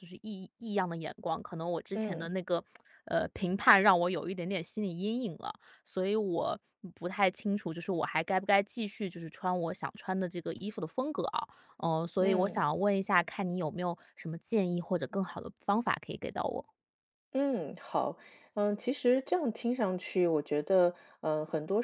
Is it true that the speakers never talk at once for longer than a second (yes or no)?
yes